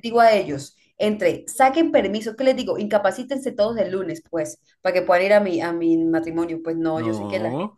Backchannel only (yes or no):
yes